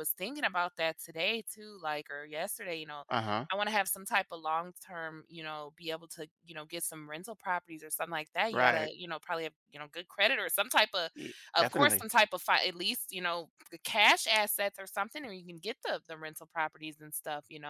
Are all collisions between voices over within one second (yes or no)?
yes